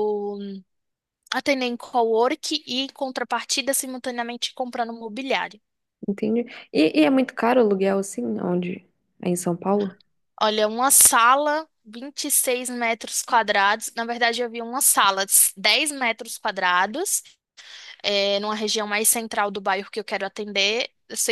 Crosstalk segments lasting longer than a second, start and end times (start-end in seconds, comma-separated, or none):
none